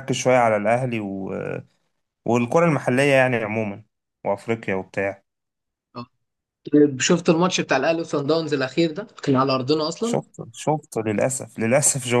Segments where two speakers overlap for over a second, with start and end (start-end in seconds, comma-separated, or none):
none